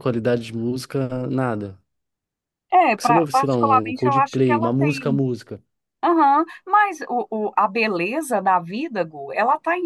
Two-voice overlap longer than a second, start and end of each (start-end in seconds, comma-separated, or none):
2.9-5.2